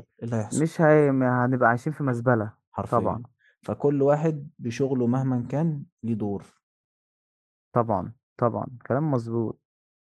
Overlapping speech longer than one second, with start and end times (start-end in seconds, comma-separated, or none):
none